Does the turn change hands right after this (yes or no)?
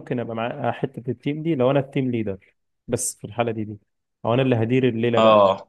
no